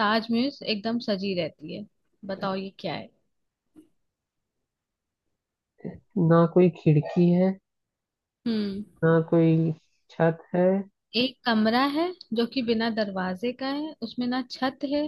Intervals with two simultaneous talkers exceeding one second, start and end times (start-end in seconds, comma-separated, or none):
none